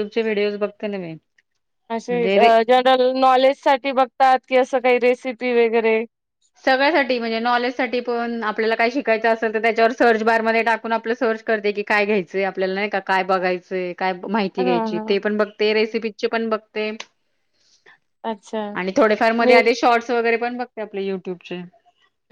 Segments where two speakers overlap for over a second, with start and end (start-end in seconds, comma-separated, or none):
none